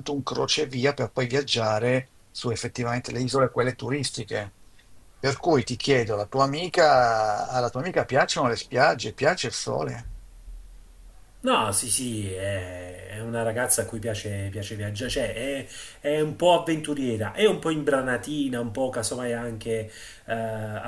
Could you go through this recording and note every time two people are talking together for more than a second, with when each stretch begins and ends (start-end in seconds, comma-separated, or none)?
none